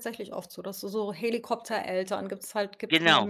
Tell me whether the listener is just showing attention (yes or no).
no